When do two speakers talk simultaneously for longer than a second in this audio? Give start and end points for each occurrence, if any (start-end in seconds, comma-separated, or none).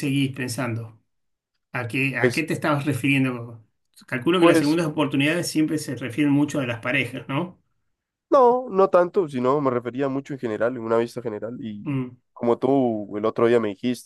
none